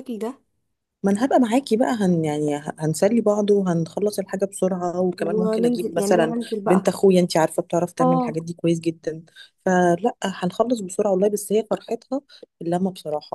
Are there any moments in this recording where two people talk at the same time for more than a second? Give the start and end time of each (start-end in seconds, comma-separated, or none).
5.2-6.9